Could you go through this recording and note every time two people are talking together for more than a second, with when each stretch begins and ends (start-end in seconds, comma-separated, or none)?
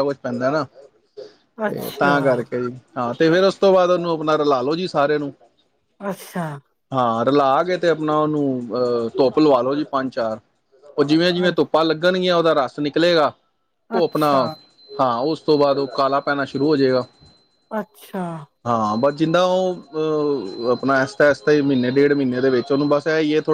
none